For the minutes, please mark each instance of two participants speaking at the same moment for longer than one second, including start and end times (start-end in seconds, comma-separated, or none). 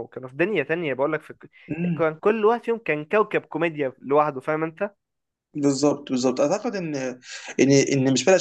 none